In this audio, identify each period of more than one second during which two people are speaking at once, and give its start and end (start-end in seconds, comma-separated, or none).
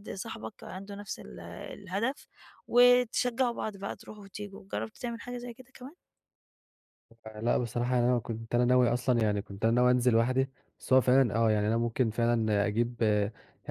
none